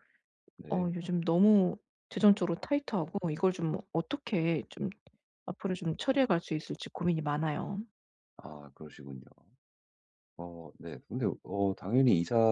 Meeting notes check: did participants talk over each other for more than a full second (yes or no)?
no